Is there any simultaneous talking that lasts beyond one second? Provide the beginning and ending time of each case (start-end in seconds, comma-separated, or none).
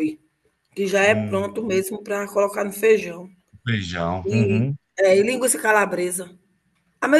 none